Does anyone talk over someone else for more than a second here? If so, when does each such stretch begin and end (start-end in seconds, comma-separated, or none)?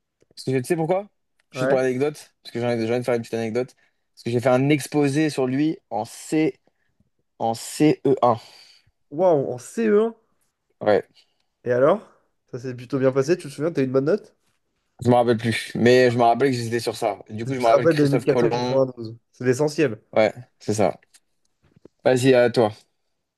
17.5-18.8